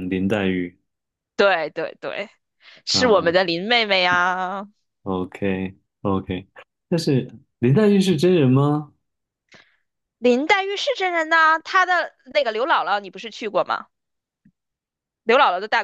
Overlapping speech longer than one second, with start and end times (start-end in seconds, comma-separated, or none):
none